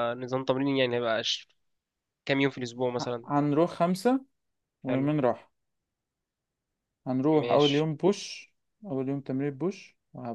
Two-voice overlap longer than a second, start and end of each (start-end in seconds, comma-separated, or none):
none